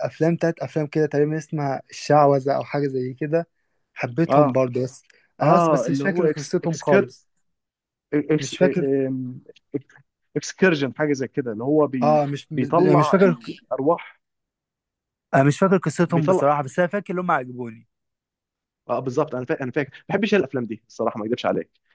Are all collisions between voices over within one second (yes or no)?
no